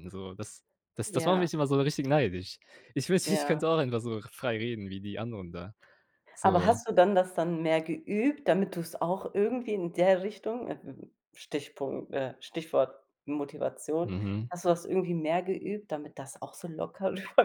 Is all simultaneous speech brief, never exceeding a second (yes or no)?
yes